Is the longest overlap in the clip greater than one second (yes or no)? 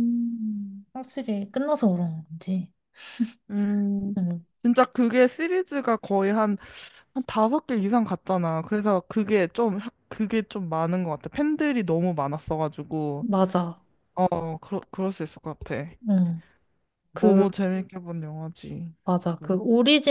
no